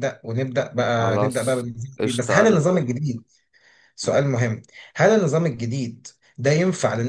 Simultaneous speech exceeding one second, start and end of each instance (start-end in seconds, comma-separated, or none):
1.0-2.6